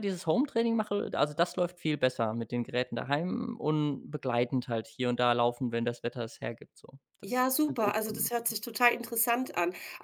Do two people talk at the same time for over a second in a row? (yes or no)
yes